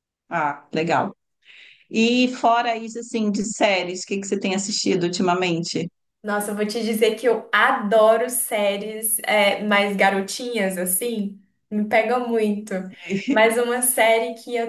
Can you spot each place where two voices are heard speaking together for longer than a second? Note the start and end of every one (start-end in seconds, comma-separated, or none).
none